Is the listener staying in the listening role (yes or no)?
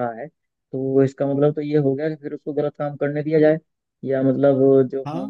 yes